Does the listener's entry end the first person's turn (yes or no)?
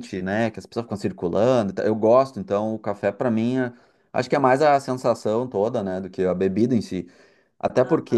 no